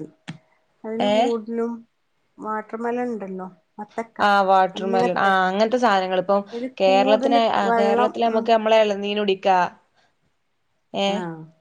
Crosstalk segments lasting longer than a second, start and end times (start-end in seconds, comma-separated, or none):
6.8-8.4